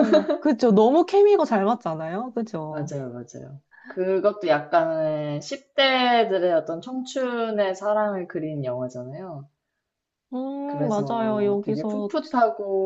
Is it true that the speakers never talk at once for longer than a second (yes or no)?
no